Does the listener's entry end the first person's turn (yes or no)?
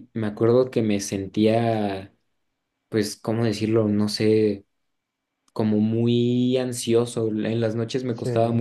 no